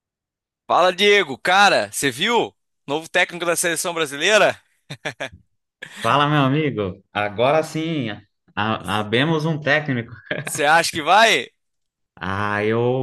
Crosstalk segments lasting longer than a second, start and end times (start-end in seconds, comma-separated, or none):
none